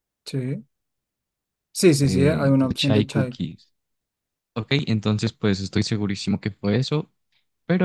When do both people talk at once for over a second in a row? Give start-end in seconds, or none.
2.0-3.4